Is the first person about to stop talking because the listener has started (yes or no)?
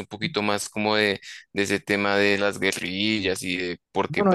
yes